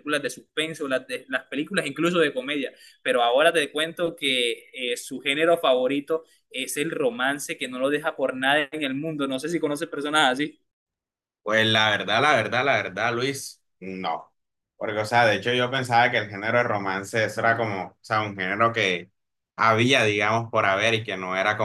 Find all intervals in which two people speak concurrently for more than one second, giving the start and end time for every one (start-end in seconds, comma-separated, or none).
none